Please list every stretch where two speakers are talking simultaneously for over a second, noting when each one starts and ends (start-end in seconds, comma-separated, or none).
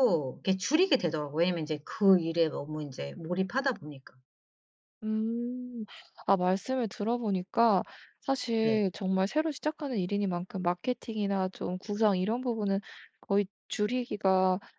none